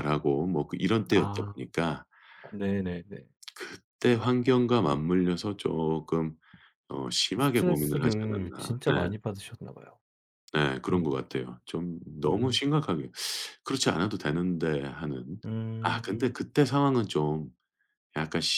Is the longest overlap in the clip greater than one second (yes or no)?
yes